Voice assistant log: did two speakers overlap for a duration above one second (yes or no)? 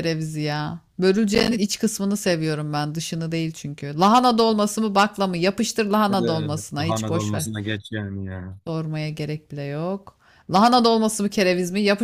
yes